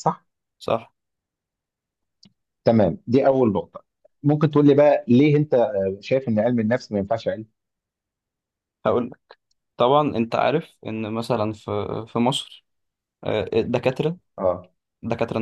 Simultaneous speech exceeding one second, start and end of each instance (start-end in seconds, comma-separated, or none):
none